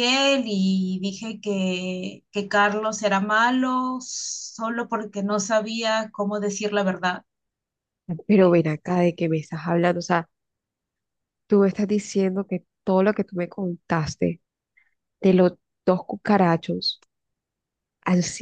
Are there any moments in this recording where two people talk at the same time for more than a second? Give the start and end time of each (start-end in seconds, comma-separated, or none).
none